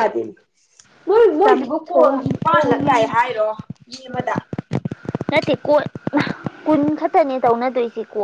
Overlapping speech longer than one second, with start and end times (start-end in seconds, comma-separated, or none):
1.4-3.3